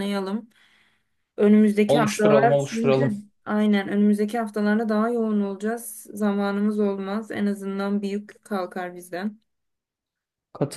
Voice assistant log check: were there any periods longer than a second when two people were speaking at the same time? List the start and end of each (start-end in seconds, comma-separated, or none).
1.9-3.1